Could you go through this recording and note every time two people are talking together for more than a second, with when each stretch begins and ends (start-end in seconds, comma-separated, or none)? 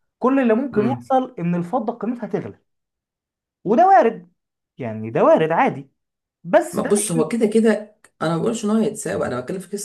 none